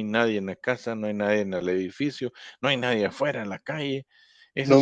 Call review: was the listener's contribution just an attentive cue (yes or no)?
no